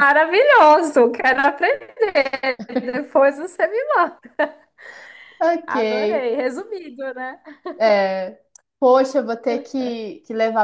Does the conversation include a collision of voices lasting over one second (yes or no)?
no